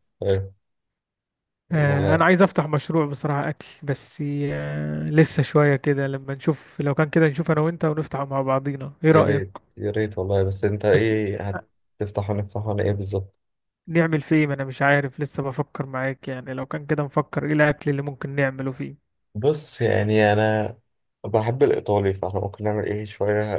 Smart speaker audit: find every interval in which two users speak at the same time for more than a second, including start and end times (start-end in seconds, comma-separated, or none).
none